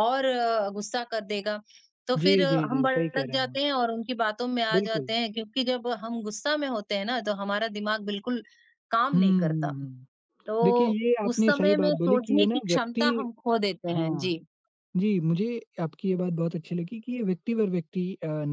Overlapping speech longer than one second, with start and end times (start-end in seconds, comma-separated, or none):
2.2-3.6, 10.6-13.0